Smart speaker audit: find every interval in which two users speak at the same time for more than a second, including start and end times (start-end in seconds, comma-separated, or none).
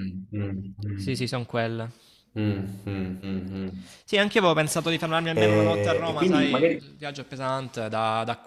5.3-6.8